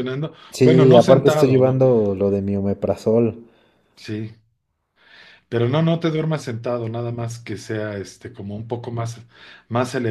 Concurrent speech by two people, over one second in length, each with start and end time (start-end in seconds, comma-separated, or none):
0.5-1.8